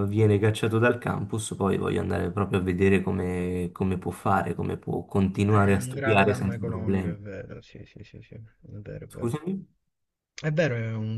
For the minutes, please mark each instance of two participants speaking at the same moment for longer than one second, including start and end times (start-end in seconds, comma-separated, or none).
5.5-7.2